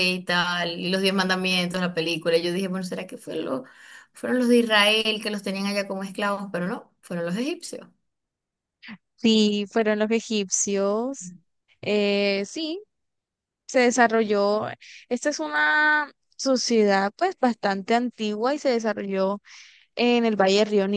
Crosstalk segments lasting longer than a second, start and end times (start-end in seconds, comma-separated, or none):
none